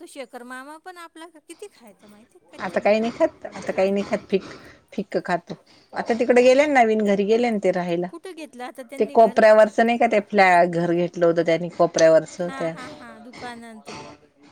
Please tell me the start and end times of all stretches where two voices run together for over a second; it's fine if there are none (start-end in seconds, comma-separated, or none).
none